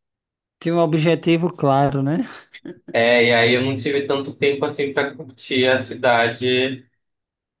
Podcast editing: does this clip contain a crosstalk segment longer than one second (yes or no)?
no